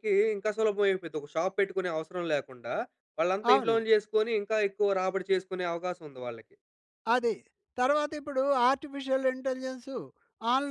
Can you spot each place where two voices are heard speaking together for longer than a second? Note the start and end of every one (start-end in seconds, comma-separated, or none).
none